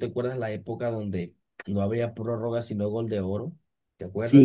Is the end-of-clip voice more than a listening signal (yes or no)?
yes